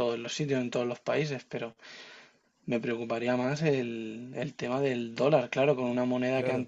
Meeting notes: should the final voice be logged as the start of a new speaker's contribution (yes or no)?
yes